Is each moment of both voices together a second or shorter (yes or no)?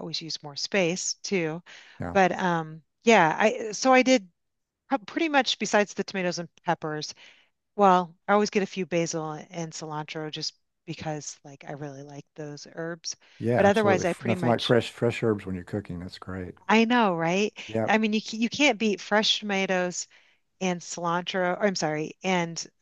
no